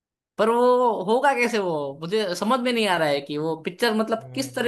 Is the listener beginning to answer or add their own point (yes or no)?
yes